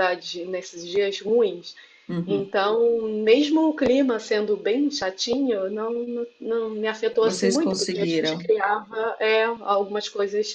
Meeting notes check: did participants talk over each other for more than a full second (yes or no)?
yes